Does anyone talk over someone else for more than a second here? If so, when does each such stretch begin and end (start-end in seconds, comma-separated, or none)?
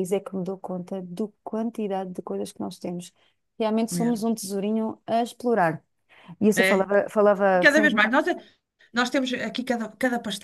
none